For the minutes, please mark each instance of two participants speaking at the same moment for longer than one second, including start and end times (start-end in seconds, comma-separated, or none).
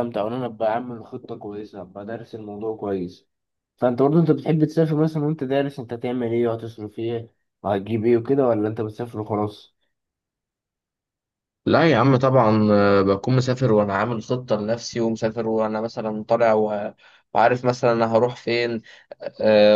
none